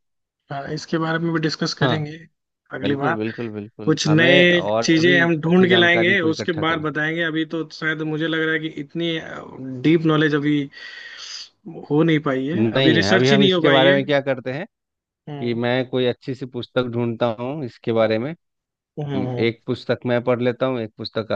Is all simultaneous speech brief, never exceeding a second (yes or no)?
no